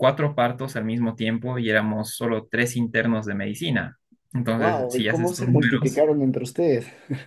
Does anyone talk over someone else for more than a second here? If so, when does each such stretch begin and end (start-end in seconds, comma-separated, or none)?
4.5-6.0